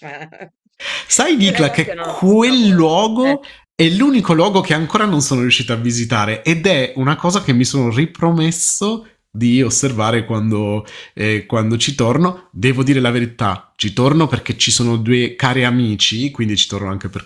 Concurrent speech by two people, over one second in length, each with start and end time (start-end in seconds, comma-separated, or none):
1.4-3.4